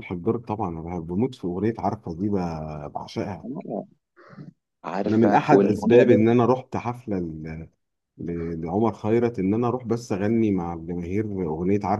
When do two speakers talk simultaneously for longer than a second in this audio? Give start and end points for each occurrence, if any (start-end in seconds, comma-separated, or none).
5.0-6.3